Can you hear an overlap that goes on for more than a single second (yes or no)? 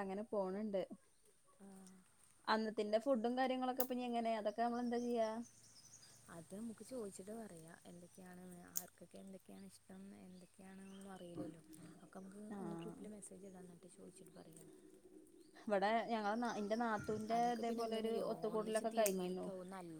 yes